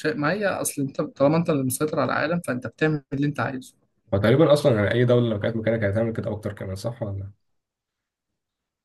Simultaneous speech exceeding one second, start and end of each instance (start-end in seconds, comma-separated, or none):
none